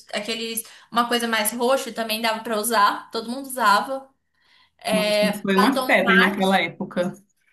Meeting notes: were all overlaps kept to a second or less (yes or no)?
no